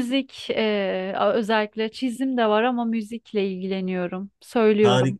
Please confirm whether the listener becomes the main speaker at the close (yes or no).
yes